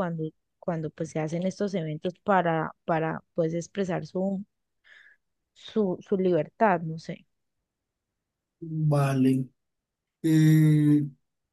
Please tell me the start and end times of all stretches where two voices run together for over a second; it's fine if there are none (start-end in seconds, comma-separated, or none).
none